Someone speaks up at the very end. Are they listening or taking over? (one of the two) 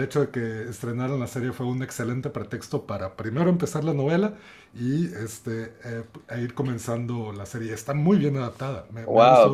taking over